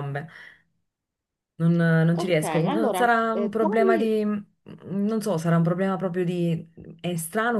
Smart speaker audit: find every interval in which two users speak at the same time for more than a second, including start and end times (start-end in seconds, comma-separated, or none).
2.1-4.2